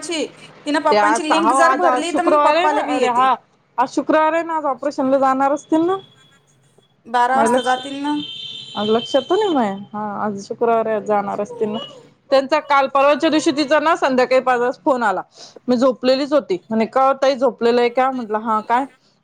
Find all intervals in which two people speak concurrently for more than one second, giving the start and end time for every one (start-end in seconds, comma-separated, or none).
0.9-3.3